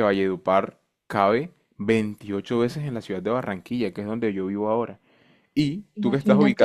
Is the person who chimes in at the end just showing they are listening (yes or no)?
yes